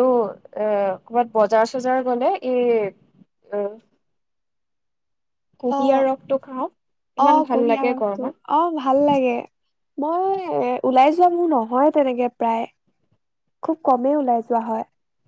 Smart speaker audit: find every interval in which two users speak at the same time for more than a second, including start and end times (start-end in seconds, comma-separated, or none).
7.3-9.2